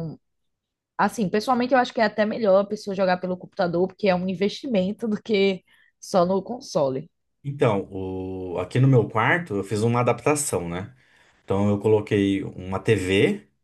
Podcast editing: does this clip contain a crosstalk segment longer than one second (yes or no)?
no